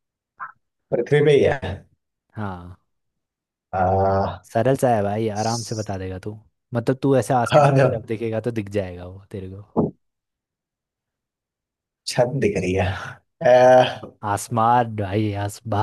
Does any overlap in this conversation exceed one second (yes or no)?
no